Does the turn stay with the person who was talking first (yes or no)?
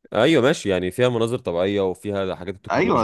no